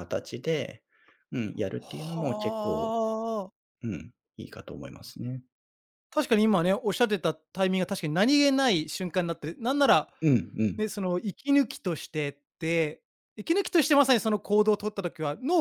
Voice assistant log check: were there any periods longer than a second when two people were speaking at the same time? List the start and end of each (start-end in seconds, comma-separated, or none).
1.6-3.0